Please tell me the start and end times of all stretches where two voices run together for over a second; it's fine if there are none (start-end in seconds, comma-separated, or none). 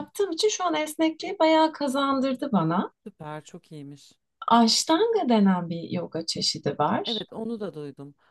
none